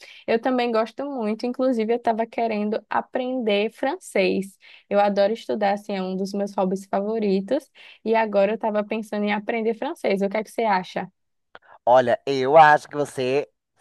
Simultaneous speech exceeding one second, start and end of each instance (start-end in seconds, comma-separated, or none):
none